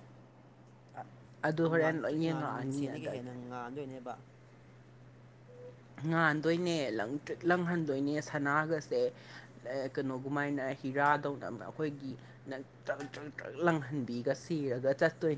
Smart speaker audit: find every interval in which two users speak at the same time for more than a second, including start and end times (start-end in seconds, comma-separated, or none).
1.8-3.3